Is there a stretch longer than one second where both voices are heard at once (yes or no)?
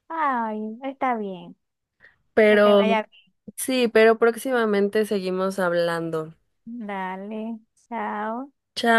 no